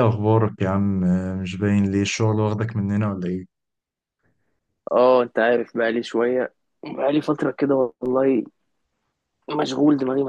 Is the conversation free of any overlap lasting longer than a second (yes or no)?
yes